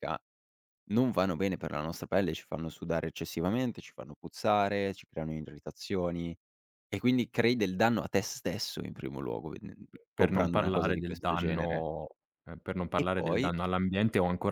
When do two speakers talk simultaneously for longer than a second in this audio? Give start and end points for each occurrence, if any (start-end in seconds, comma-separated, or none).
10.1-11.8